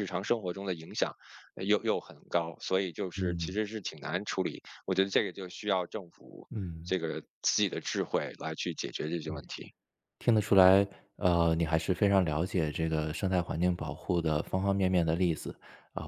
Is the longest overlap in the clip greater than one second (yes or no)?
no